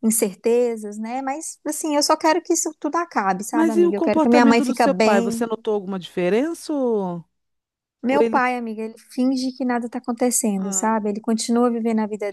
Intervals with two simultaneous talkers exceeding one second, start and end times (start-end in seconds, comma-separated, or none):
3.5-5.5